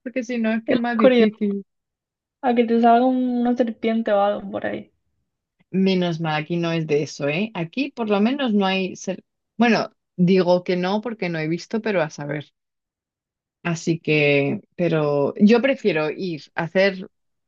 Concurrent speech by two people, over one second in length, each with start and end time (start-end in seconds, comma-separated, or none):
none